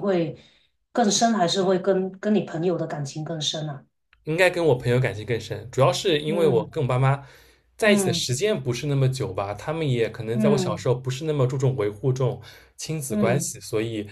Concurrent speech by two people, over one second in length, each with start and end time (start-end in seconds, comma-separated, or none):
none